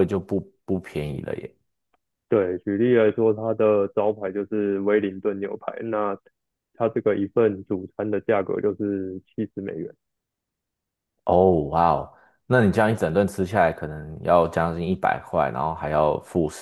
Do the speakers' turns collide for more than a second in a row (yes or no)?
no